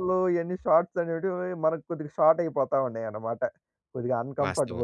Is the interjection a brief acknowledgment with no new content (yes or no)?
no